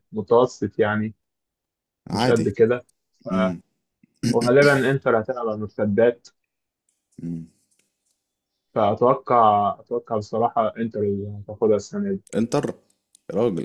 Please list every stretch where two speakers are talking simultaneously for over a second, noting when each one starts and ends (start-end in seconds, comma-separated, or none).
none